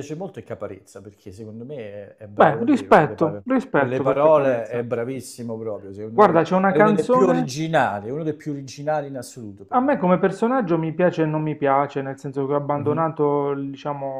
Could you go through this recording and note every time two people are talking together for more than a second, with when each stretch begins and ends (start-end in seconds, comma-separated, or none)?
2.3-4.8, 6.1-7.5